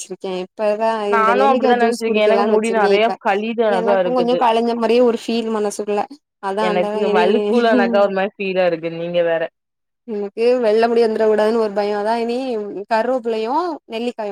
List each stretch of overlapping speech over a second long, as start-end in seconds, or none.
1.1-3.1